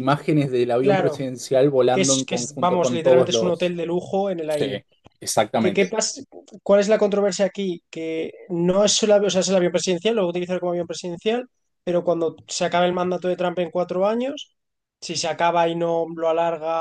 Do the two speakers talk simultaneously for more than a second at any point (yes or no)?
yes